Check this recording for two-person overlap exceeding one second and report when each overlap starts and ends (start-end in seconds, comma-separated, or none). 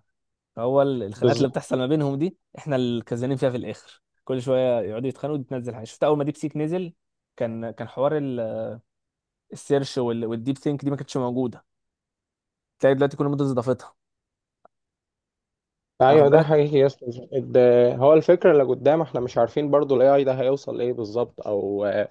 none